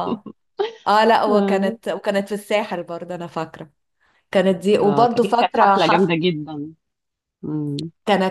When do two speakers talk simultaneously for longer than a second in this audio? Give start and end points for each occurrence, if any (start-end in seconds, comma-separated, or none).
4.8-6.1